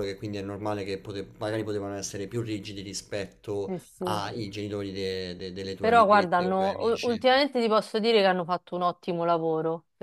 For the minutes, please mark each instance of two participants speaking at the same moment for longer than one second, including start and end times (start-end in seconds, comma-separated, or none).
5.8-7.2